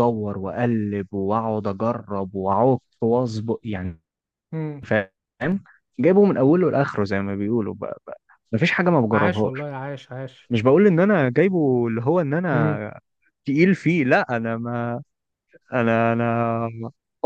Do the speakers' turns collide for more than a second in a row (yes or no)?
no